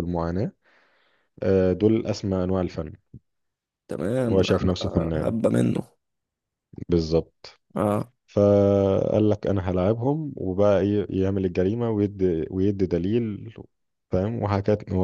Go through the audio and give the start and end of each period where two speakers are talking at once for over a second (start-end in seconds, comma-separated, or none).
none